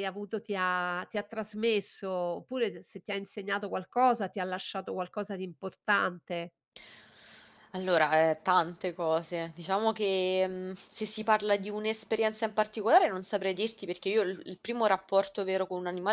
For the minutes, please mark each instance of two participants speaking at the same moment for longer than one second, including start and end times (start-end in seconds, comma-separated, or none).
none